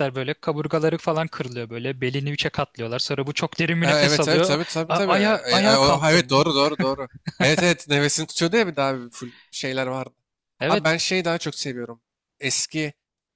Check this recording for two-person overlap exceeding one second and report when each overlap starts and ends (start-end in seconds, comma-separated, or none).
3.8-6.4